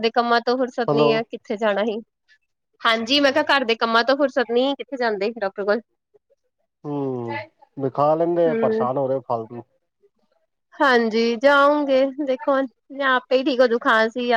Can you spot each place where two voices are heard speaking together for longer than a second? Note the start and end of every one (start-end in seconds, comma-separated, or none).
none